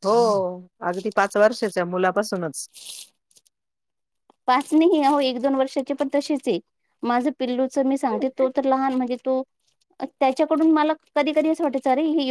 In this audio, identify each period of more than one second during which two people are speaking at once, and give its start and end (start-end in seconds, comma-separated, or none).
none